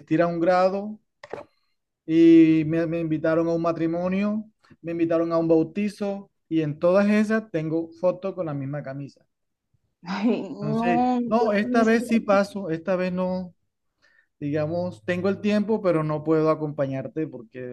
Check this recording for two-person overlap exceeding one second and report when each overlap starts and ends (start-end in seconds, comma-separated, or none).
10.6-12.4